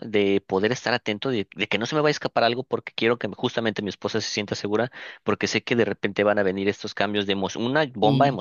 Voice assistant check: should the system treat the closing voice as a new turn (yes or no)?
no